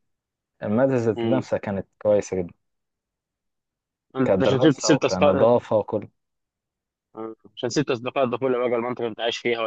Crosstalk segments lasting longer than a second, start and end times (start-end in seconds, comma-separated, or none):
4.2-5.5